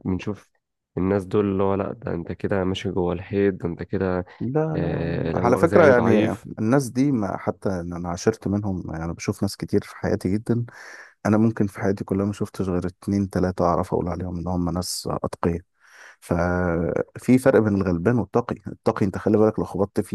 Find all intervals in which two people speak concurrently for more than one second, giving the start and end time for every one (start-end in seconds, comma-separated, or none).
4.8-6.5